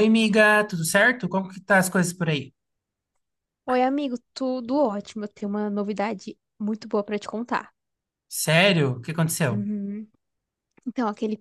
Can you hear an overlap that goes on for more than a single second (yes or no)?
no